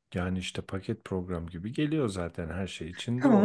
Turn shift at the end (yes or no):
yes